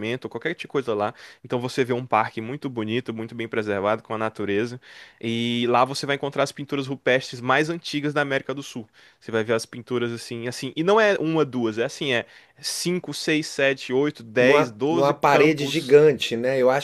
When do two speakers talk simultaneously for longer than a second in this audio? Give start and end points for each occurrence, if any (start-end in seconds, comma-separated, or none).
14.4-16.0